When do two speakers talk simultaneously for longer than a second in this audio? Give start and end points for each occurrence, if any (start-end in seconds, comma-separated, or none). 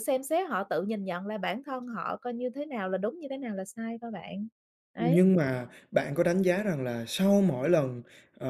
none